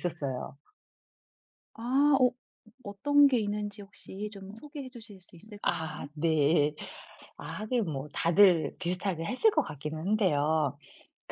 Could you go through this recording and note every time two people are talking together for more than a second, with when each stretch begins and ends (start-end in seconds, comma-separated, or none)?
none